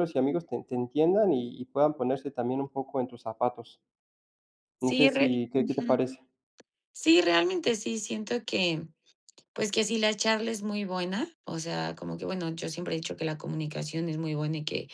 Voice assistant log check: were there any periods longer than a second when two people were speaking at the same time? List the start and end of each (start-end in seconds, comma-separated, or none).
4.8-6.0